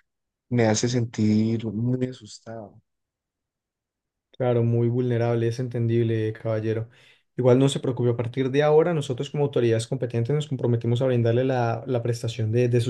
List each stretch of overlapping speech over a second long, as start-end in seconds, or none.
none